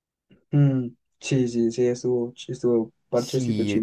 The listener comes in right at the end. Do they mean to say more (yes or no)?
yes